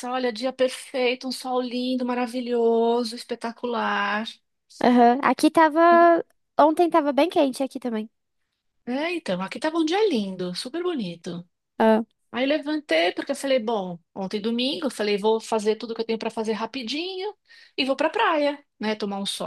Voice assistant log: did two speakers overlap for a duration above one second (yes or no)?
no